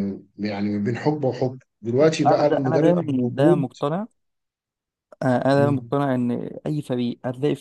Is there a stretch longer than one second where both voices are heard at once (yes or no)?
yes